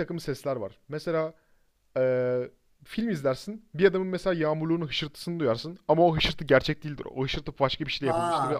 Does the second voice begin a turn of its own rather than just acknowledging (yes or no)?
yes